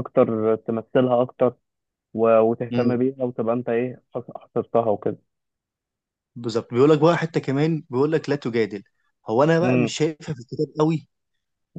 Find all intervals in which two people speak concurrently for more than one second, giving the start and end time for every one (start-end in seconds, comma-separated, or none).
none